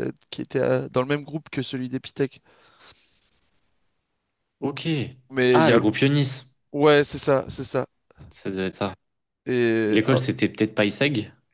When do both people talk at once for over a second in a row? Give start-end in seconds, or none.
none